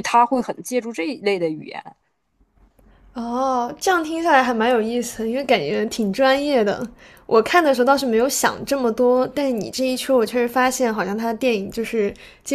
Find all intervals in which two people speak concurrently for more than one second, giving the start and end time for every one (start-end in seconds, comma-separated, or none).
none